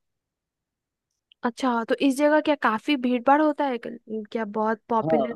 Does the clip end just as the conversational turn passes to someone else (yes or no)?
yes